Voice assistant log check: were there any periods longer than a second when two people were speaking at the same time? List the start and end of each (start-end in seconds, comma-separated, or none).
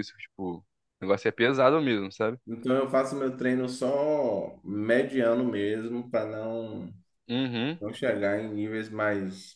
none